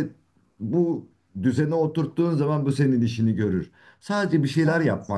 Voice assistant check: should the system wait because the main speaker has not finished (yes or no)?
yes